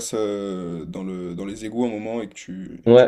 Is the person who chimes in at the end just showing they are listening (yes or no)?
no